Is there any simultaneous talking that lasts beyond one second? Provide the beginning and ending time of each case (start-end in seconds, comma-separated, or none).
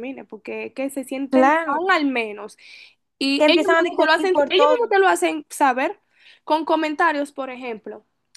3.4-4.9